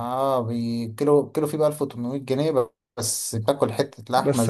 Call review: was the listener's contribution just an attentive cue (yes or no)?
no